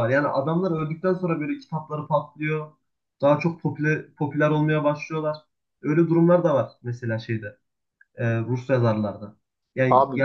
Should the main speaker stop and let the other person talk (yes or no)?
no